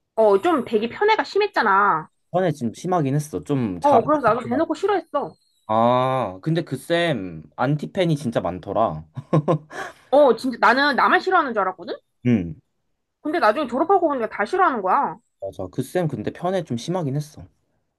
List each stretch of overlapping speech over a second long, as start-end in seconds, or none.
none